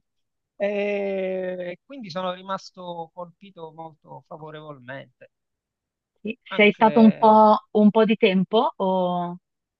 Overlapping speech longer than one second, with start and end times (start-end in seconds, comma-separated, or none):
none